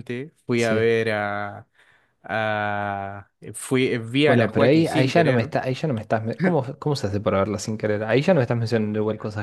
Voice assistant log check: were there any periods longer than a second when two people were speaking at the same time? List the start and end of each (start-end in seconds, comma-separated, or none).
4.2-5.5